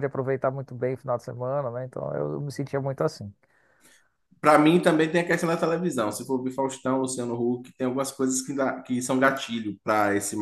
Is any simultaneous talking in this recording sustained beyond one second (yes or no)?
no